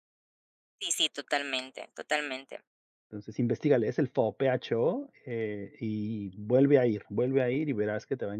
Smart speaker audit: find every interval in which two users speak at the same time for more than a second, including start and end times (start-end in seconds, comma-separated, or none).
none